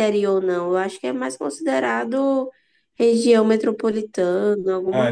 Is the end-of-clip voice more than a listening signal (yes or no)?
yes